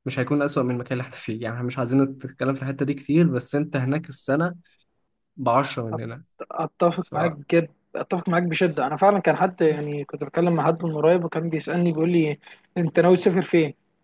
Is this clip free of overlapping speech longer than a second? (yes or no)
yes